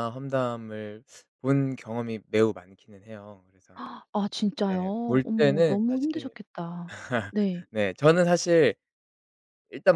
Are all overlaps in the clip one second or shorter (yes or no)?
no